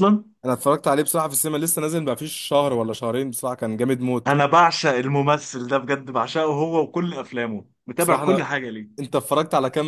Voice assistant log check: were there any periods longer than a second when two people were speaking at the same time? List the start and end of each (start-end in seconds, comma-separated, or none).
none